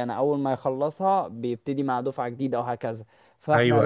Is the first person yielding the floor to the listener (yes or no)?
no